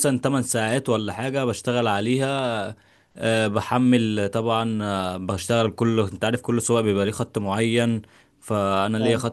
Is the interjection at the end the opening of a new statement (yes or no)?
no